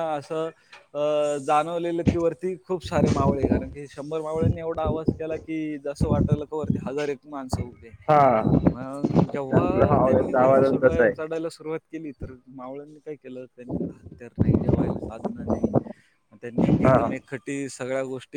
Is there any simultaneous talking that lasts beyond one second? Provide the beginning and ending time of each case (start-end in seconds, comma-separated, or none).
9.6-11.3